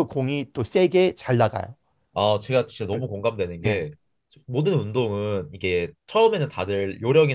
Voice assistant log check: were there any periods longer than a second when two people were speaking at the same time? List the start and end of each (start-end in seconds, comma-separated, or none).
none